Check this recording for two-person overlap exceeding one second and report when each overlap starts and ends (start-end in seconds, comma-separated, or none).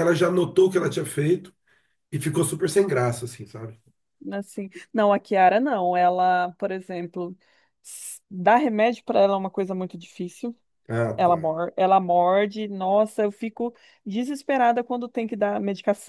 none